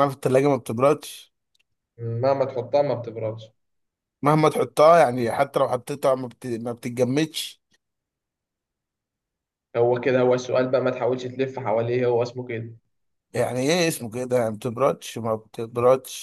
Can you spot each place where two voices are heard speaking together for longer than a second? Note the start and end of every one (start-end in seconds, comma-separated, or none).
none